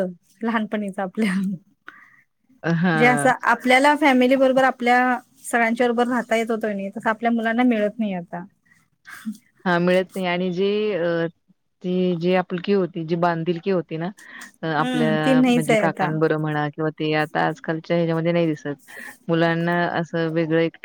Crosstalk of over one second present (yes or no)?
yes